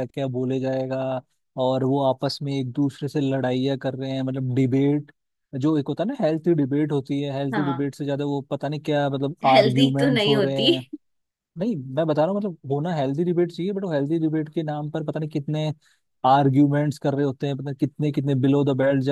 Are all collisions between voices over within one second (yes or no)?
no